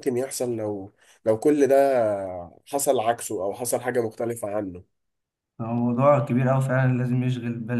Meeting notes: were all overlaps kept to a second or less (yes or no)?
yes